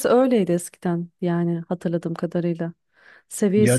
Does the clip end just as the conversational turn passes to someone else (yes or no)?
no